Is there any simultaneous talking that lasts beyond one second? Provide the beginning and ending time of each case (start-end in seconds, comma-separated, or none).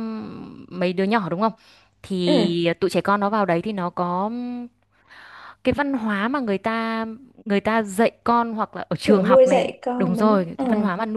9.0-10.6